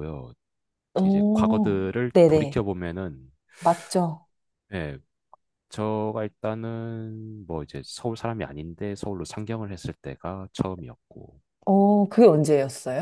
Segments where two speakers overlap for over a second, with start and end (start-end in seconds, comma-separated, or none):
1.0-2.6